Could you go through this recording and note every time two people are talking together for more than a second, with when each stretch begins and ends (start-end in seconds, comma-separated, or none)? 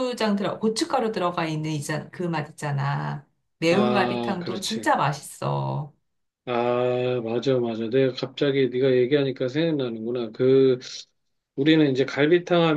3.7-4.9